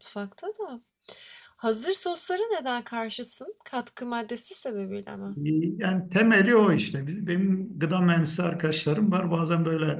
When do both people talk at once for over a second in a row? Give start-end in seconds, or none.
none